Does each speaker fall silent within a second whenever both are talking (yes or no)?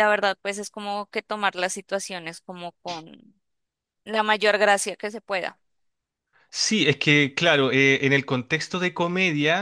yes